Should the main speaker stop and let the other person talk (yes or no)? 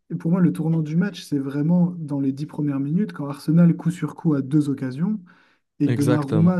no